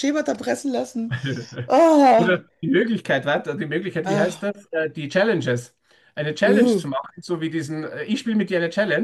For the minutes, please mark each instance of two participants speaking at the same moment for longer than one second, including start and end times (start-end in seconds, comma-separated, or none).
none